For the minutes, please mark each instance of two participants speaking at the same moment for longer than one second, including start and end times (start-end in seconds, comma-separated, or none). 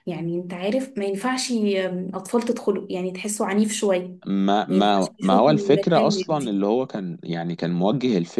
4.7-6.6